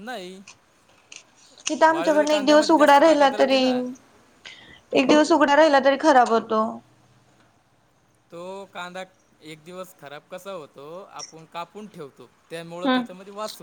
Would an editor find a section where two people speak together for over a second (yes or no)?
yes